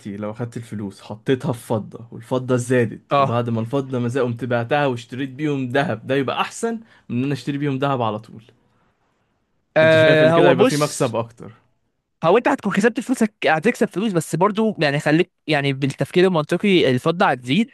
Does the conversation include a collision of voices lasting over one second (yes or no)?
yes